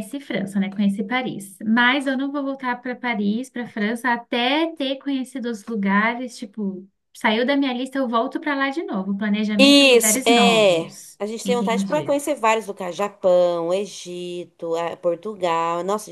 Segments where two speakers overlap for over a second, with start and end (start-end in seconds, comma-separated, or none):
9.6-12.2